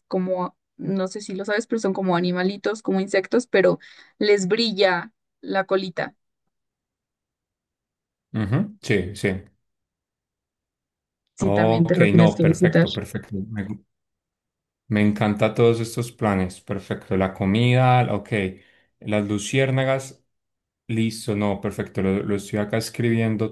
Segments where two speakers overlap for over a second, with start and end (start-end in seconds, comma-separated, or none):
11.4-12.9